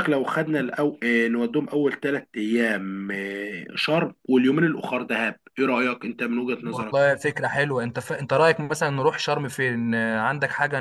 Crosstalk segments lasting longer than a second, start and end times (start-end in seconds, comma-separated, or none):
none